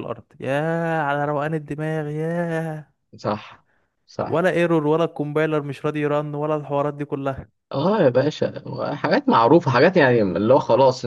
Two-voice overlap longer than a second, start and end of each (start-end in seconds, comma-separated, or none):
none